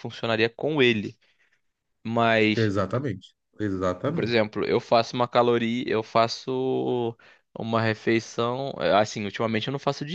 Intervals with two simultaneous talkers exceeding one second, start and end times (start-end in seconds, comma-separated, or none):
none